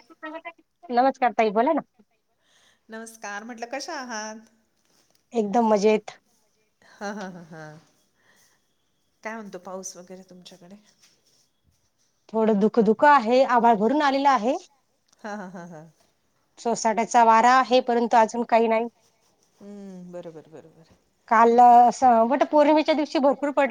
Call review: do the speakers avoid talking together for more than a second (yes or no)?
yes